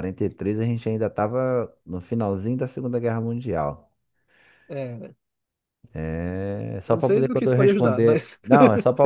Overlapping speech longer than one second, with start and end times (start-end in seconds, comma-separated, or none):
6.9-8.4